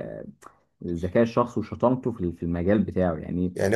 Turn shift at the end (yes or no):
yes